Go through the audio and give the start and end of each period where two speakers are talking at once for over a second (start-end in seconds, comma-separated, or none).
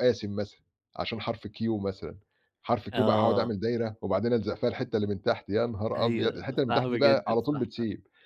6.0-7.7